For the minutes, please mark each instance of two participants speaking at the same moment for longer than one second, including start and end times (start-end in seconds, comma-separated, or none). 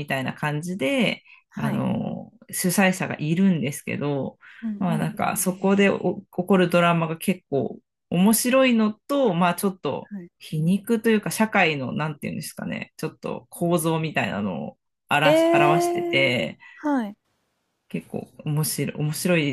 15.2-16.6